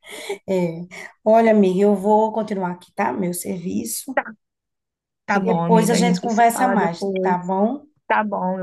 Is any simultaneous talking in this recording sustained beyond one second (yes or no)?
yes